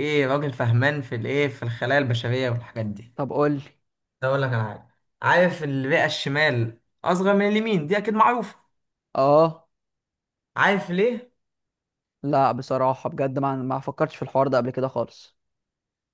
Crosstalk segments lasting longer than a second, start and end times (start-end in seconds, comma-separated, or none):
none